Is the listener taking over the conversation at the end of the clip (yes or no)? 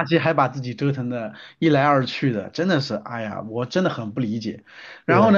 no